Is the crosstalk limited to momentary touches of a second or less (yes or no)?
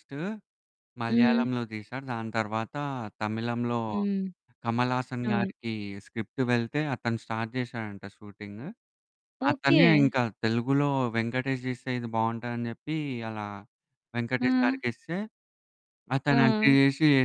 yes